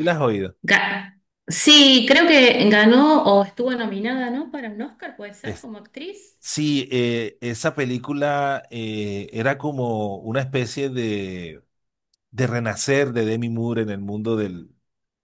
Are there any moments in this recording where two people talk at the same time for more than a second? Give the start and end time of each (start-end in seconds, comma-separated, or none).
none